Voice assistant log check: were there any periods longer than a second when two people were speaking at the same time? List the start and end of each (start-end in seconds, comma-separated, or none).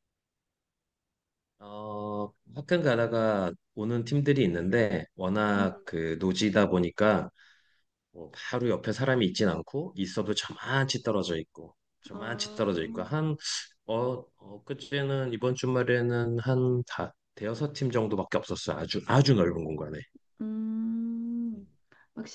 none